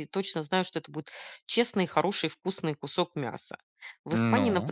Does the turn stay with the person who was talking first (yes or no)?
yes